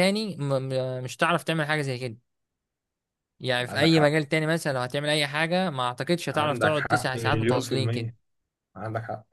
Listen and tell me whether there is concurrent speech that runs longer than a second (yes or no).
yes